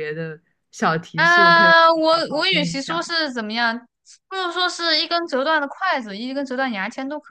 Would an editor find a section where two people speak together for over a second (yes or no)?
yes